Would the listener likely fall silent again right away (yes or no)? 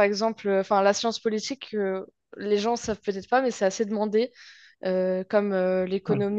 yes